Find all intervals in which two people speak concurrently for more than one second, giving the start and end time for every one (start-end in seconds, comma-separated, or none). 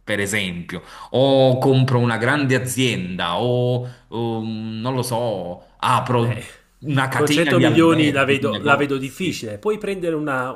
7.1-9.5